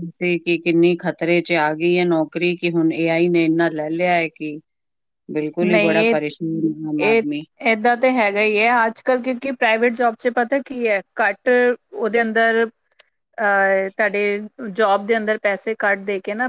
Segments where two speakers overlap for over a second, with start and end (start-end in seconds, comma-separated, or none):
none